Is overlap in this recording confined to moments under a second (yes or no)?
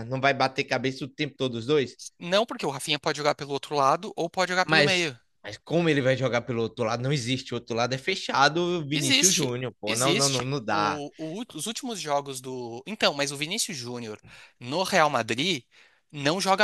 no